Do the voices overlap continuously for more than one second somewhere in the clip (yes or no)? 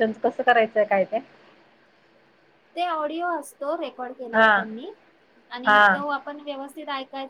no